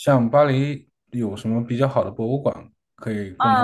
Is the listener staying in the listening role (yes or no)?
no